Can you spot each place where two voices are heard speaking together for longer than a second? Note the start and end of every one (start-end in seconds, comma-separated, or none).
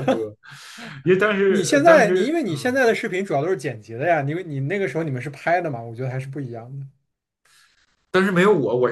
1.5-2.7